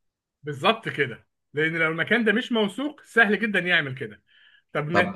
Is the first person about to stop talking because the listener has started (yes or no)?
yes